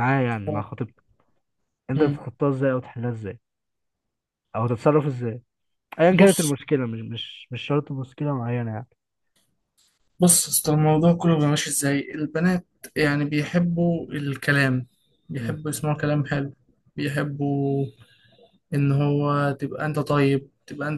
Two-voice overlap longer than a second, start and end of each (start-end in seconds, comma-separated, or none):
none